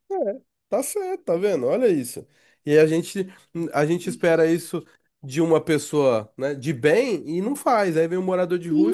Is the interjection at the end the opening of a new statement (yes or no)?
yes